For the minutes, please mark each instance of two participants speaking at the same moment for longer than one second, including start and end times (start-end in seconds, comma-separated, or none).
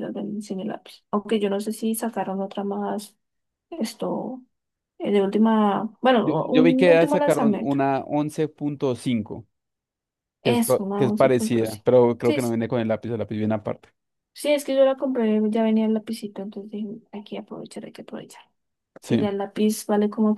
6.2-7.8, 10.4-12.6